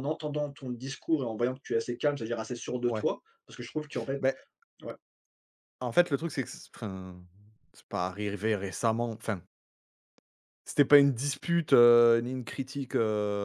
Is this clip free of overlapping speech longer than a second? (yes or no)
yes